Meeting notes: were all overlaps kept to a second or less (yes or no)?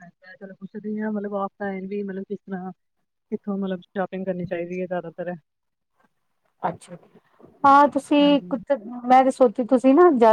yes